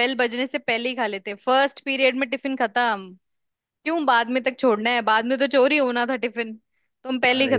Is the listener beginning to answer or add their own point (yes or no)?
yes